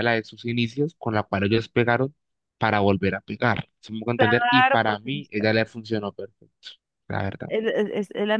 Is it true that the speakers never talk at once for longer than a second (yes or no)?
no